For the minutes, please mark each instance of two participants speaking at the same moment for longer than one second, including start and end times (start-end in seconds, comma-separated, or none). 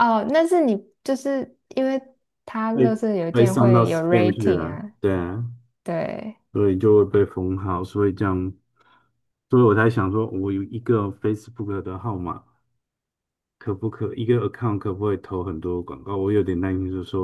2.7-4.9